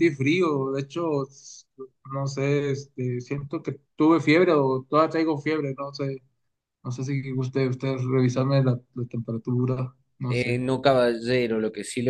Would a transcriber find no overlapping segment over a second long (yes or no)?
yes